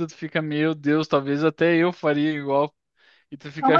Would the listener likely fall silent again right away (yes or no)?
no